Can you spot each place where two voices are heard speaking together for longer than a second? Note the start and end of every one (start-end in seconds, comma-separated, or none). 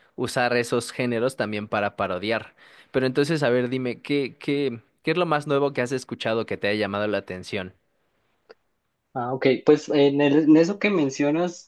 none